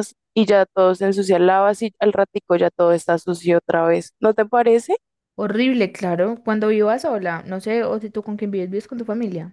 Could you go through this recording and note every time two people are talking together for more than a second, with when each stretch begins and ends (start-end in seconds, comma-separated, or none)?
none